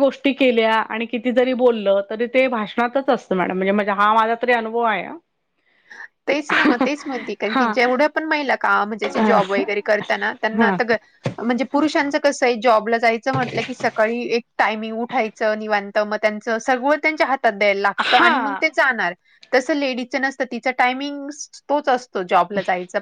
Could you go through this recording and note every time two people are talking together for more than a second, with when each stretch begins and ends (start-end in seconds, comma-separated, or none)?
none